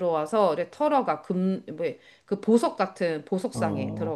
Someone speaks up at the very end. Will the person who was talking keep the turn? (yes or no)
no